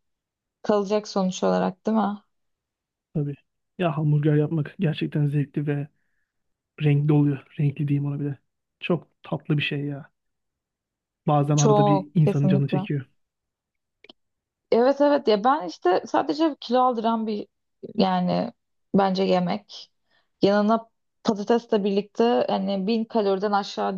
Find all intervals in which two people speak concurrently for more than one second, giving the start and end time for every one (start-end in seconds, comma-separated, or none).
11.6-12.8